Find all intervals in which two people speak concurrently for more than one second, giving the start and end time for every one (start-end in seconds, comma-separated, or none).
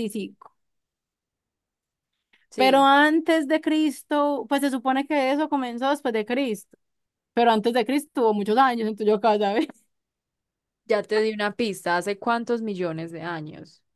none